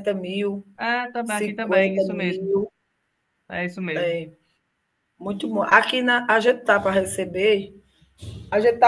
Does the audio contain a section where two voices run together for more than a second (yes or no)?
yes